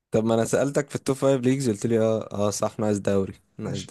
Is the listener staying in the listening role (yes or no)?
no